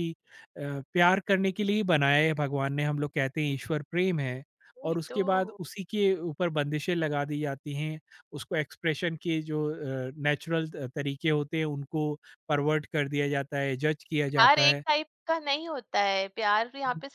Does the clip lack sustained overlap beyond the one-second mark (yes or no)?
yes